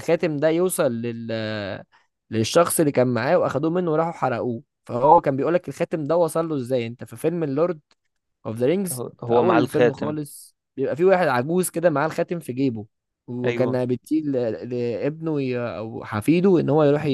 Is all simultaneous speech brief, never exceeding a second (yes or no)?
no